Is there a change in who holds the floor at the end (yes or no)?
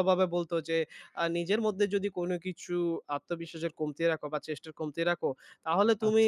no